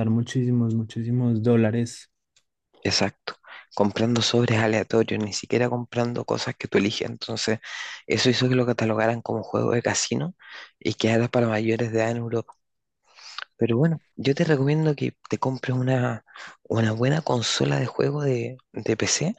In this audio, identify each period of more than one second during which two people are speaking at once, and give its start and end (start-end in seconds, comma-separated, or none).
none